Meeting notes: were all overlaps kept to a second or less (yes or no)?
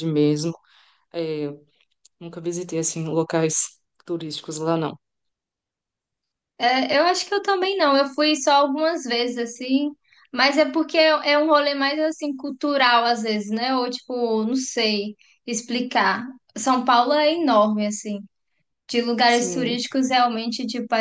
yes